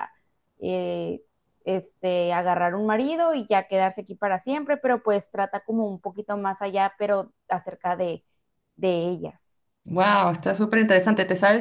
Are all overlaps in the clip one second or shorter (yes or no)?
yes